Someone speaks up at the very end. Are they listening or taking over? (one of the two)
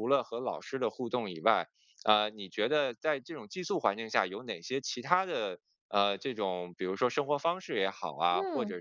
listening